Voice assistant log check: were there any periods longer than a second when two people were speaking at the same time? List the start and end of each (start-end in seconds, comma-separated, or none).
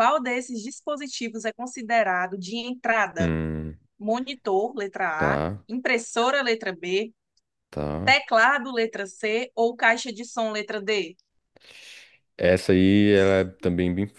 none